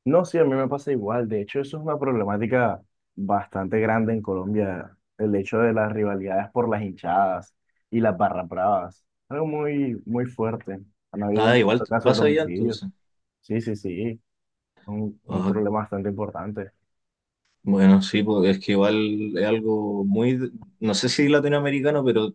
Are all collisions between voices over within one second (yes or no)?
no